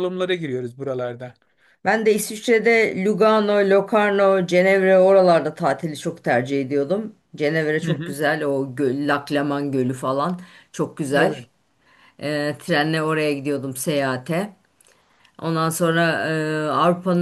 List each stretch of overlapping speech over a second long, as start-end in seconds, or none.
none